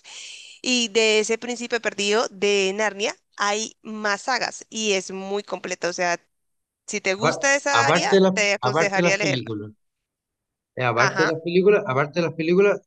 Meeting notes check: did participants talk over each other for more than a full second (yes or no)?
yes